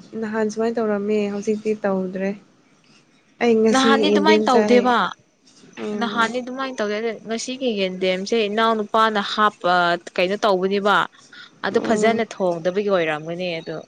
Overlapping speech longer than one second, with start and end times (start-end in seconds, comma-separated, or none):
3.7-4.9